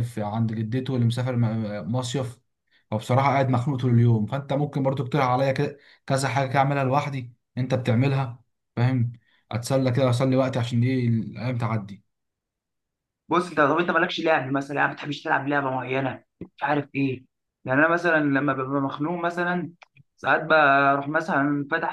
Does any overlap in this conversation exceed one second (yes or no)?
no